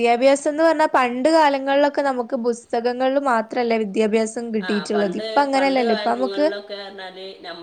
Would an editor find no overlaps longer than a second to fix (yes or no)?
no